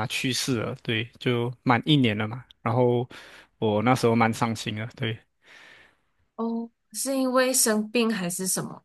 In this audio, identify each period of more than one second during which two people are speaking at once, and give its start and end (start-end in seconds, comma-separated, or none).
none